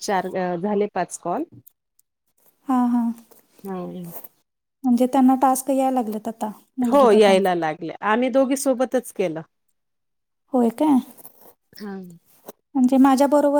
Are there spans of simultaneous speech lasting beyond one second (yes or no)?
no